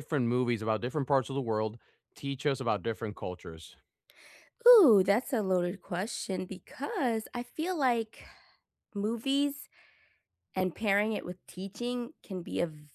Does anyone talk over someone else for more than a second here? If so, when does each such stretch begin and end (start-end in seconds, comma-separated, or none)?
none